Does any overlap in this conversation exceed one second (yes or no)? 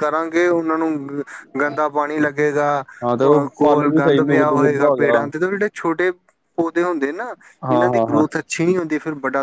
yes